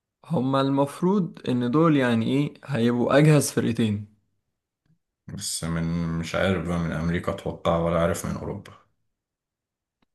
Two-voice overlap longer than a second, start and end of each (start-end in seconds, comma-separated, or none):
none